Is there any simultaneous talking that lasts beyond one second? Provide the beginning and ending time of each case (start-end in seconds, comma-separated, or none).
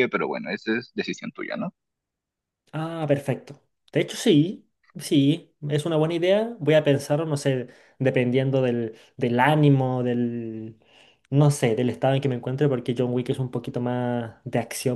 none